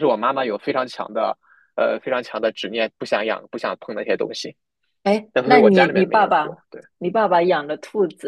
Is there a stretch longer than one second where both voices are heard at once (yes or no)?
yes